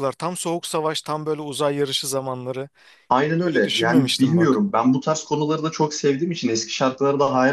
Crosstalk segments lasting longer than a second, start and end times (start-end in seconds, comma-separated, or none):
3.3-4.7